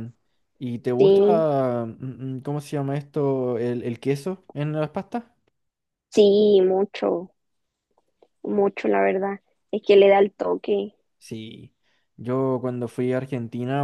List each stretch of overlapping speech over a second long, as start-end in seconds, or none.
none